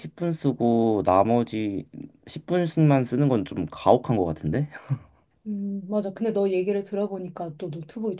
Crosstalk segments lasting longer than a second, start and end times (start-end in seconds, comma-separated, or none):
none